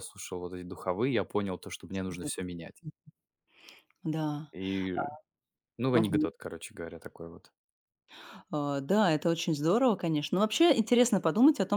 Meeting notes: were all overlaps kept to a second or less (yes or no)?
yes